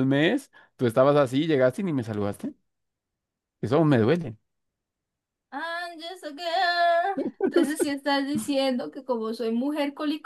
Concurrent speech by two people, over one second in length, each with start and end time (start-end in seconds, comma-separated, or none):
none